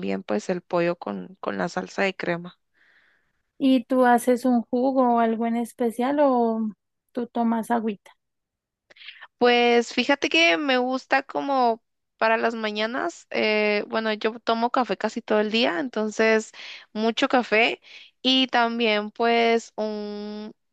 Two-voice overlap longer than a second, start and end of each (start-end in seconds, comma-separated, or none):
none